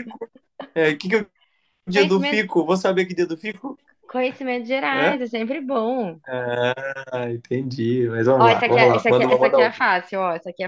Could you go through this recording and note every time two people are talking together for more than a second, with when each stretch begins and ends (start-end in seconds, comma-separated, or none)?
8.4-9.9